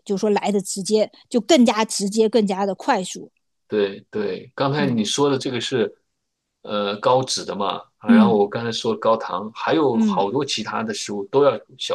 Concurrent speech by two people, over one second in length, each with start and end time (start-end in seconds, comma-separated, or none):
none